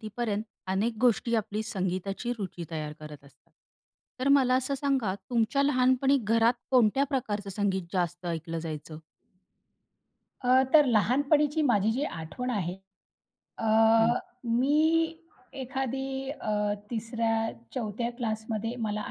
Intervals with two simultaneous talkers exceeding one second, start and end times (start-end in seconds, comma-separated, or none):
none